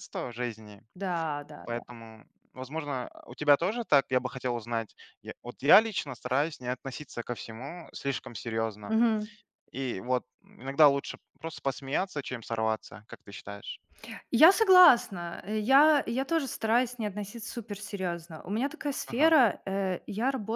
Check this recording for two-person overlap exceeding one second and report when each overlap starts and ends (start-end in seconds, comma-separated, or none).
none